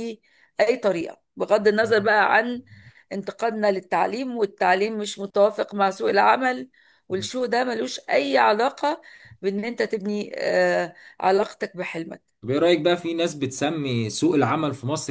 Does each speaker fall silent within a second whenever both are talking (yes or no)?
yes